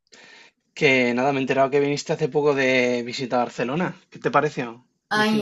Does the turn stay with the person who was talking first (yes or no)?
no